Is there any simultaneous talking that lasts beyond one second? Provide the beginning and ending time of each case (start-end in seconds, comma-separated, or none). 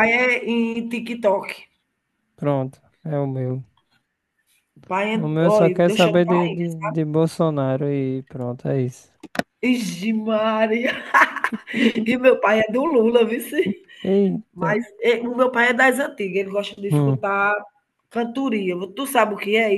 5.1-6.5